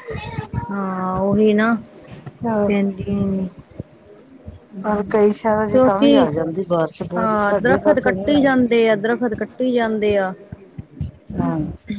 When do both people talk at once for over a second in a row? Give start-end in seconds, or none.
7.2-8.5